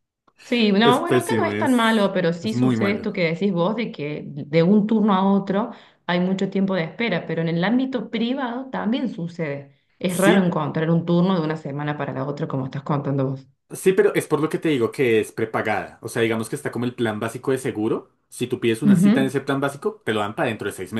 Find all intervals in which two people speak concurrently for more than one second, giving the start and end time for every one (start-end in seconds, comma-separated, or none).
0.8-3.1